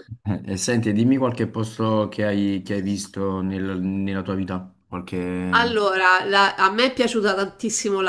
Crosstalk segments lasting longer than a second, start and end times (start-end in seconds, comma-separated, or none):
none